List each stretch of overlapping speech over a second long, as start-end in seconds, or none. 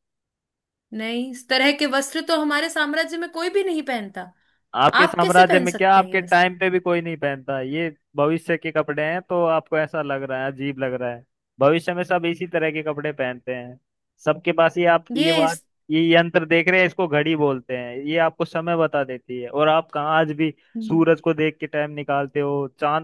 5.0-6.4